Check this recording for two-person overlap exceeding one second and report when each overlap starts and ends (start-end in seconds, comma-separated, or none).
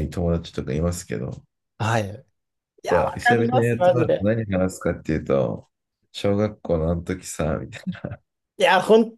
2.8-4.3